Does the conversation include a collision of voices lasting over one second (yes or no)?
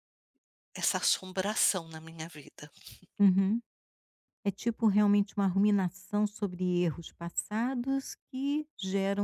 no